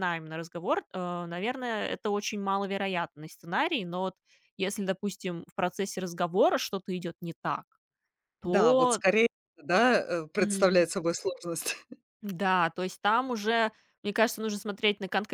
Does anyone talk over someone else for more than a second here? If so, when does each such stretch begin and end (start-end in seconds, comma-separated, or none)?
none